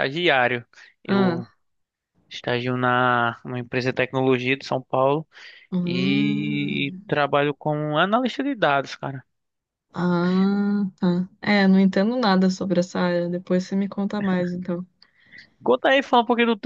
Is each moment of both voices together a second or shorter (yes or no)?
no